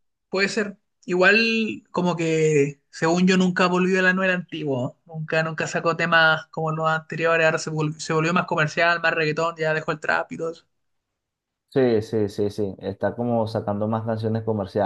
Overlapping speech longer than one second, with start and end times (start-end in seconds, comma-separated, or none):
none